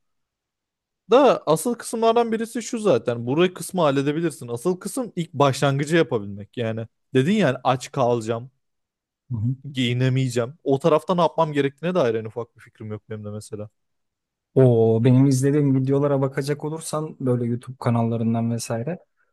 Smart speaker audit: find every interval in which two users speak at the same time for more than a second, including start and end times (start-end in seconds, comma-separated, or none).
none